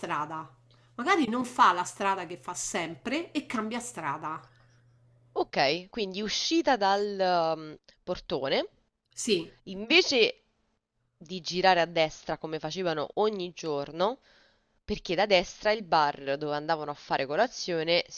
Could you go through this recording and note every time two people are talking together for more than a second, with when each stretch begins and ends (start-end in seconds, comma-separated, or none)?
none